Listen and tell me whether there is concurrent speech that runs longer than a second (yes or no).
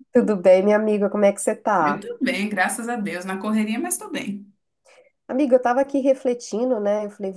no